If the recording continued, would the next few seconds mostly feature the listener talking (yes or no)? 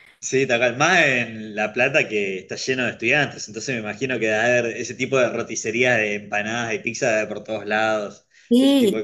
yes